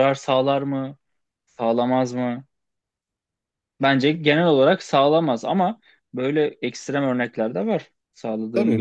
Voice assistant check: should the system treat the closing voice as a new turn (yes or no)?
yes